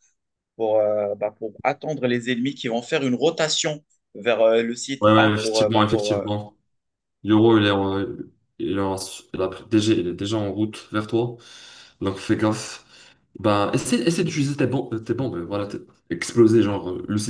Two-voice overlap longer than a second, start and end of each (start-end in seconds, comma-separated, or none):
5.0-6.3